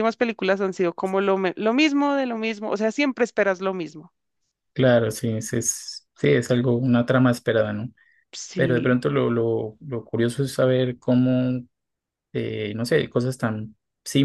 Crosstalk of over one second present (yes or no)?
no